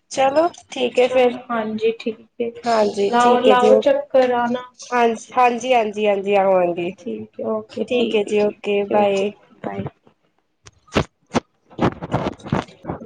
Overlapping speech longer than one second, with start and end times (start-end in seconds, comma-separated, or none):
3.1-4.6